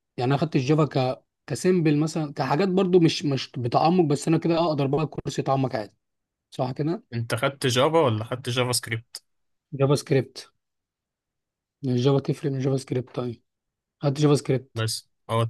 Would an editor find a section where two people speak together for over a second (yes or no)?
no